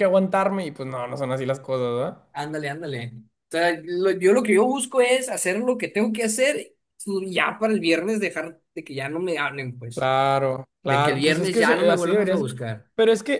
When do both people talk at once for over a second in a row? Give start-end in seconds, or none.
10.8-12.5